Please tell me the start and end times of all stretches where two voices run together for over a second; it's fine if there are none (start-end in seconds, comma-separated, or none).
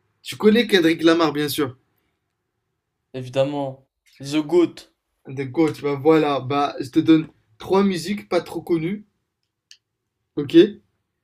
none